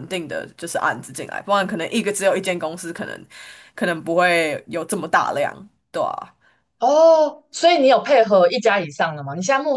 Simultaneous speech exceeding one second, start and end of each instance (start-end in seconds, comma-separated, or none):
none